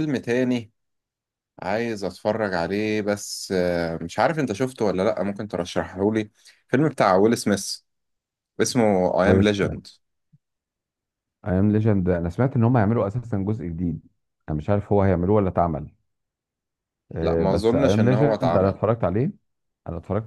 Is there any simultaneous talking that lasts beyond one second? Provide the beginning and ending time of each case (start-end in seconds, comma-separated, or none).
17.2-18.8